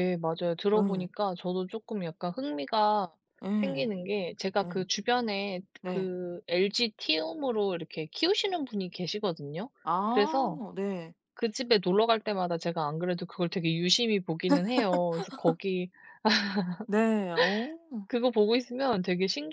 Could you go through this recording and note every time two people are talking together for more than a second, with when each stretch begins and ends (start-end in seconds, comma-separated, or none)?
none